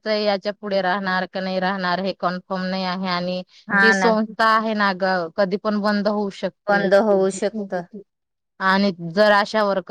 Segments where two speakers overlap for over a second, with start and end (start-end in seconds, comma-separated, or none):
none